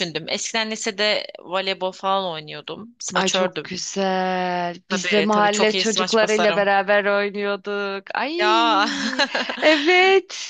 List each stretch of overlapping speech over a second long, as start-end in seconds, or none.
4.9-6.6